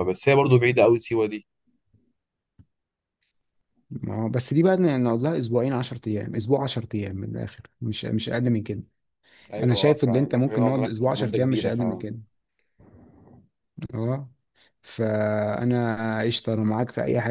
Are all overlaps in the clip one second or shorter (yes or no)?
no